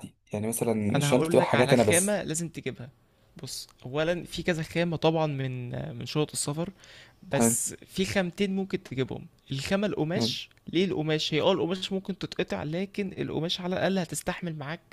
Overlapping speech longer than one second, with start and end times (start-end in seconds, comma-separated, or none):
0.9-2.2